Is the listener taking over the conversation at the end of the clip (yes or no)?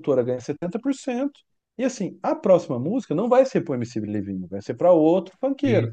no